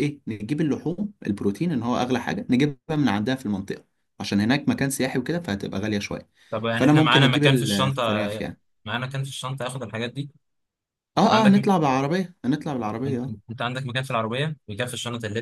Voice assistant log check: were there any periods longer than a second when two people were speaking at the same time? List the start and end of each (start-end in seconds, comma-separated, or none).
6.7-8.2